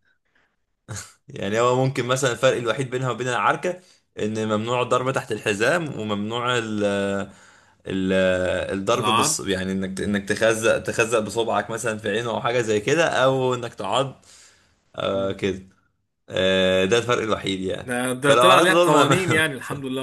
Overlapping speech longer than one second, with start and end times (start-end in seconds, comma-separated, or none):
17.8-19.5